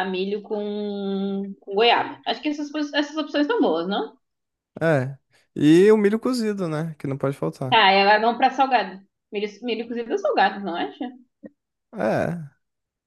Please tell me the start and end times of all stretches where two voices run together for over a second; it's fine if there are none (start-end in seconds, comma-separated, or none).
none